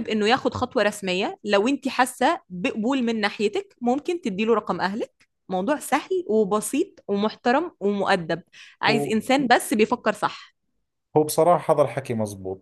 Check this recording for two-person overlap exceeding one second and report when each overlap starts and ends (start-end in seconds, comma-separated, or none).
none